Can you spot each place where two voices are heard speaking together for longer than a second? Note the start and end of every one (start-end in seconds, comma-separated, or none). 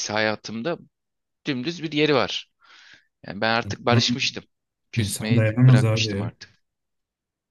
5.0-6.3